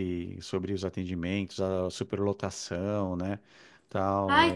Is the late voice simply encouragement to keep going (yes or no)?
no